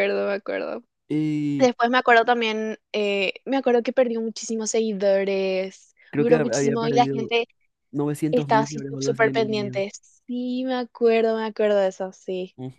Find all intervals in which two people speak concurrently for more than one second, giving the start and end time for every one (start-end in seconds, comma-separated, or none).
6.1-7.3, 8.3-9.8